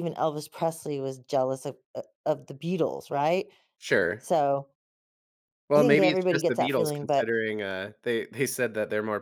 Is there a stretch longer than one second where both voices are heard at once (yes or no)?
yes